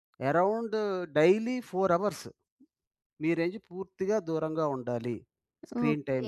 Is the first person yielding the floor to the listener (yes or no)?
yes